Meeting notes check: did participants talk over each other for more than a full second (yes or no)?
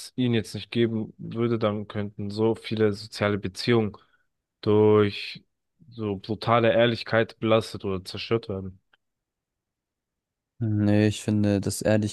no